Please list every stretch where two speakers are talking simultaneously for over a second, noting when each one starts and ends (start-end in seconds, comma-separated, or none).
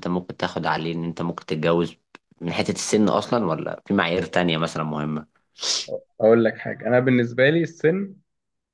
none